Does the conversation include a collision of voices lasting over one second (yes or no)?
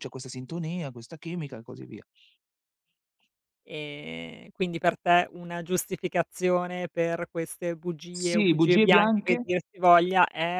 yes